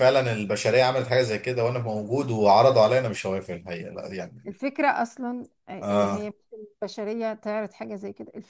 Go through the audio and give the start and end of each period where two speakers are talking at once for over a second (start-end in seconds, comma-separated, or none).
none